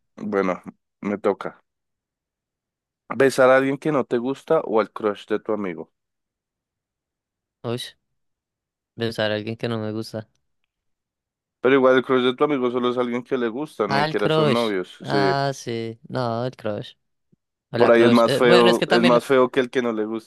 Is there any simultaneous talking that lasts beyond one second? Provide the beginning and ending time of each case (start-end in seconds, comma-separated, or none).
13.9-15.3, 17.8-19.2